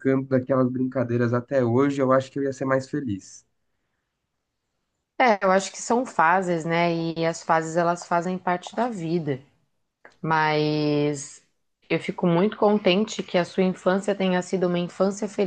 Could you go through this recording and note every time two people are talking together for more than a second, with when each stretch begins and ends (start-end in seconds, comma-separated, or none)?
none